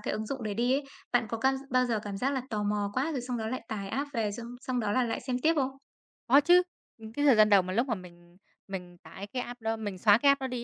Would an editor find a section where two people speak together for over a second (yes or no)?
no